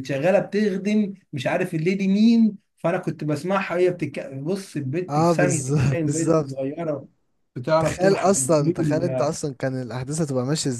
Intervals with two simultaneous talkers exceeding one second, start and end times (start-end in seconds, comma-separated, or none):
5.1-6.6, 7.8-9.3